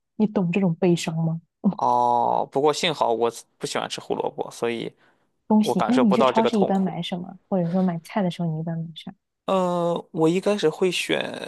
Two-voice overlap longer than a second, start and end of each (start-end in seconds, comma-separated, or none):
5.6-6.9